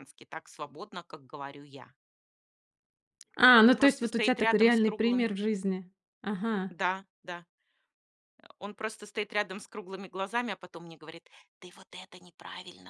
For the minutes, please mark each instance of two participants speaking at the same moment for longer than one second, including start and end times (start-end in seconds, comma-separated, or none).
3.8-5.3